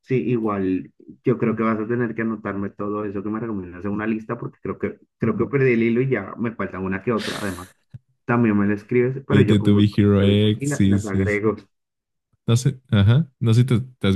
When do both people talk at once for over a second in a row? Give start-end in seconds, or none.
9.3-11.4